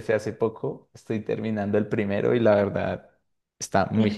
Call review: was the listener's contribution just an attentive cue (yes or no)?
no